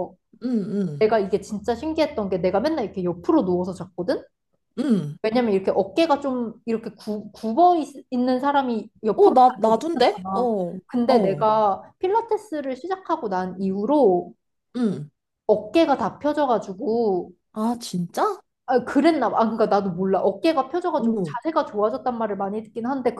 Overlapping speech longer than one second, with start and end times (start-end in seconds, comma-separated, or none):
9.1-11.5